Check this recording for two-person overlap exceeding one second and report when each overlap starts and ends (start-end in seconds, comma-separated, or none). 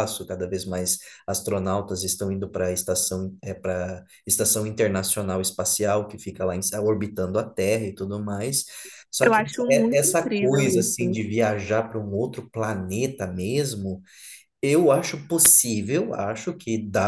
9.2-11.2